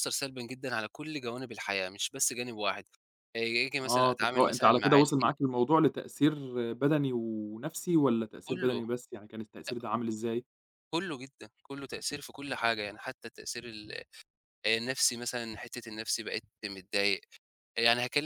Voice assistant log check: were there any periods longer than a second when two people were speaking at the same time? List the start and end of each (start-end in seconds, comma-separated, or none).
3.8-5.4